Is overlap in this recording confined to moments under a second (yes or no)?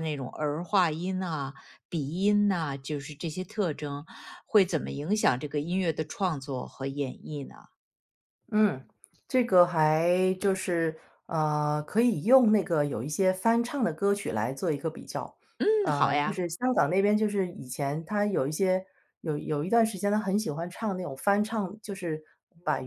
yes